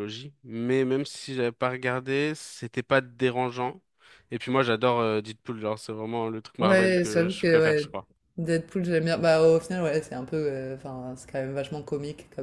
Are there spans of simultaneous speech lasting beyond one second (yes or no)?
yes